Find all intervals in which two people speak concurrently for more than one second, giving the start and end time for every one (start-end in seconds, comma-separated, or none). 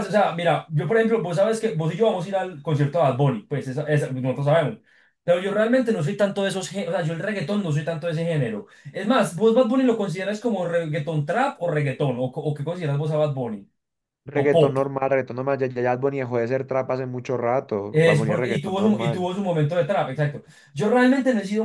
17.9-19.3